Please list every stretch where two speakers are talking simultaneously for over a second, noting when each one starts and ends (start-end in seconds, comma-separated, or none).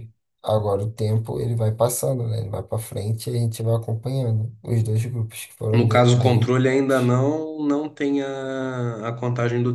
5.7-7.1